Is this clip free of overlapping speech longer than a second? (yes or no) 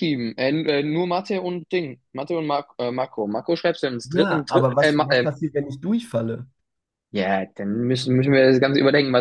no